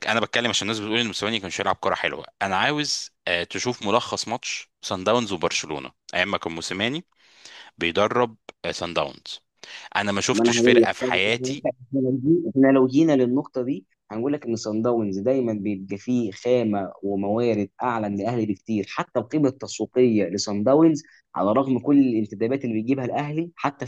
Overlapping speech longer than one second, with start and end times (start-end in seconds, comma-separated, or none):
10.3-11.7